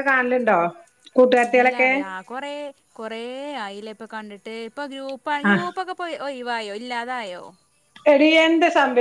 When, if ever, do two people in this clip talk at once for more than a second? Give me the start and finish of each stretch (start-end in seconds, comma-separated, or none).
none